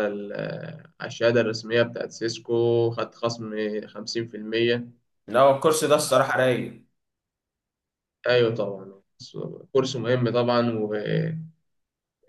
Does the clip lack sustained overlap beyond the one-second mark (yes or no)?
yes